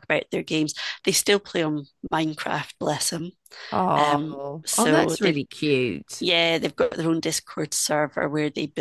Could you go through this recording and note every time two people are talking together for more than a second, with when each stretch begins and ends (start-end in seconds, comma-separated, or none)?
4.0-5.4